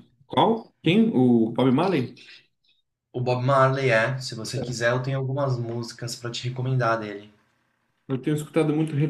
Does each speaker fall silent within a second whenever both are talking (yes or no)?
yes